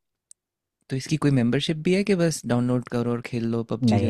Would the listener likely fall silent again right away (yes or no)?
no